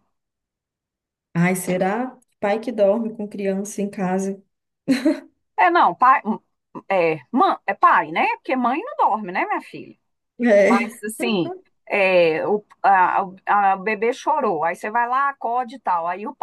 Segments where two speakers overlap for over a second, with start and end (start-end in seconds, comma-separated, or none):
none